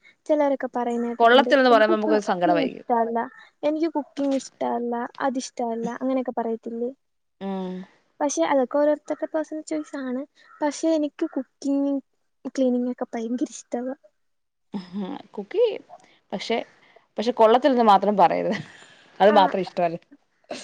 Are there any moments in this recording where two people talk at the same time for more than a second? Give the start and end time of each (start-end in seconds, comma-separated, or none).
1.2-2.9